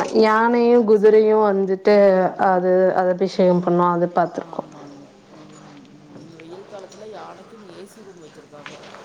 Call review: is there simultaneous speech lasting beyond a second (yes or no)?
no